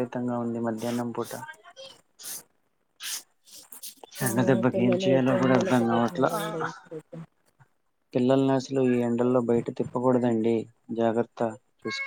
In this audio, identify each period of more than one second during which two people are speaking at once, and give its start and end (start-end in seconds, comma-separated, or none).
4.7-6.2